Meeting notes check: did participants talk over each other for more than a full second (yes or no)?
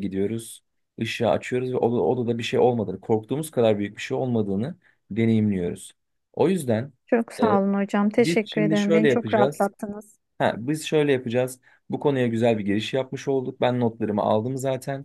yes